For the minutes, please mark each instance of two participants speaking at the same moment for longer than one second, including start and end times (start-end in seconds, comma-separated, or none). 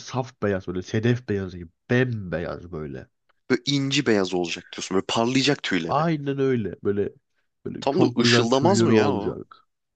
7.8-9.4